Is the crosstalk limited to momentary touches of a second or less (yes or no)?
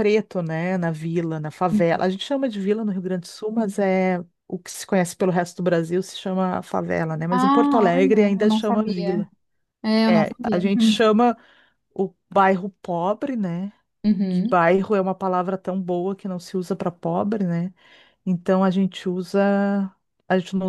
no